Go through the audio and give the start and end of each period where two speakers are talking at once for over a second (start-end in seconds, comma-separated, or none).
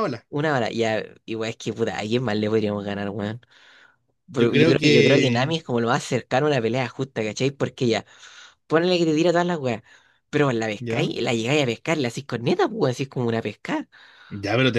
4.4-5.6